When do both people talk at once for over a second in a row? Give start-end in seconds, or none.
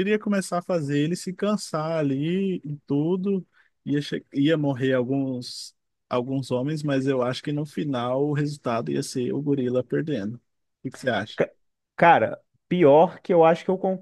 none